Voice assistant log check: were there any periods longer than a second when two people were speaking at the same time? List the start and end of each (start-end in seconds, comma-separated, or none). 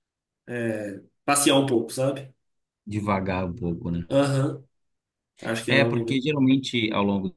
none